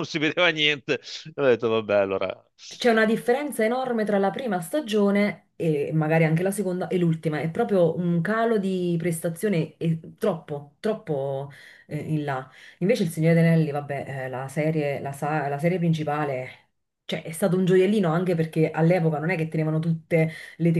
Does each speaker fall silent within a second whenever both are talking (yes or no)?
yes